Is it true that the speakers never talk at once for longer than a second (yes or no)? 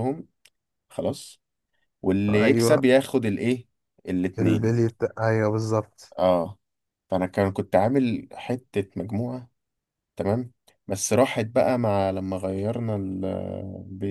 yes